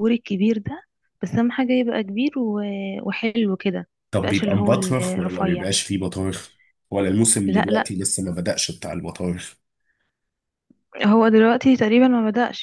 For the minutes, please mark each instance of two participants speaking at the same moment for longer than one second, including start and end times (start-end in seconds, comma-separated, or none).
4.1-5.7